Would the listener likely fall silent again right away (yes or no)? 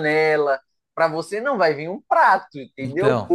yes